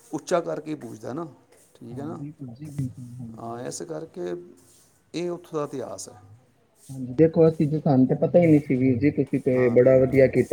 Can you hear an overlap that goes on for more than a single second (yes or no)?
no